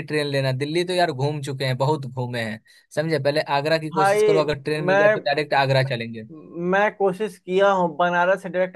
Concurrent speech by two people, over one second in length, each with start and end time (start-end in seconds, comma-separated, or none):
none